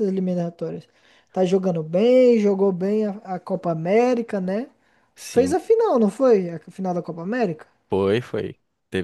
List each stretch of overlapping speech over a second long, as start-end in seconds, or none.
none